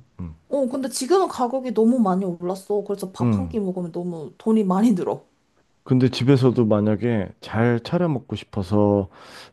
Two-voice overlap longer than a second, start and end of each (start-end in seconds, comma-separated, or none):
none